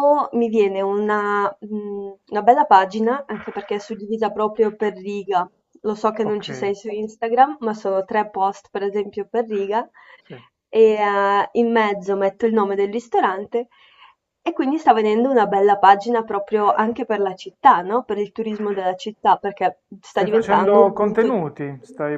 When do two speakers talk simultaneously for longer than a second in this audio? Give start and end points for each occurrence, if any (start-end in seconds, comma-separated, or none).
20.0-21.4